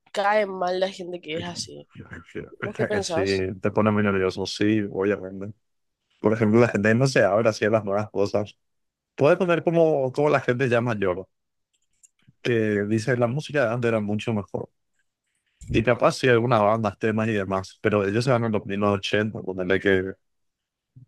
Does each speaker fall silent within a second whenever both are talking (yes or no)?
yes